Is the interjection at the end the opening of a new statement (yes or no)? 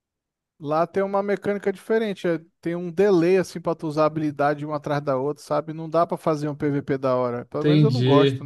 yes